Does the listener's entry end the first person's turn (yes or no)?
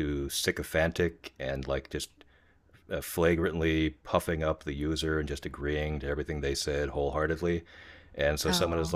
no